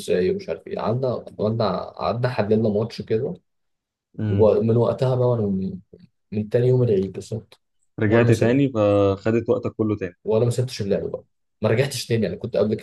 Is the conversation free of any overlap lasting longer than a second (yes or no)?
yes